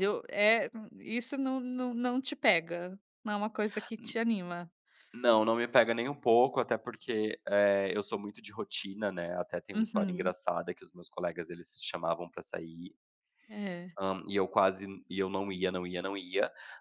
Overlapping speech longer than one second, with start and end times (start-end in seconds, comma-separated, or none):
none